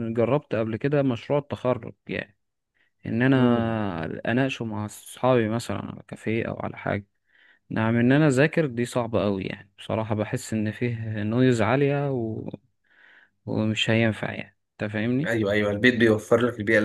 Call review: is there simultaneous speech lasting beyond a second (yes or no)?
no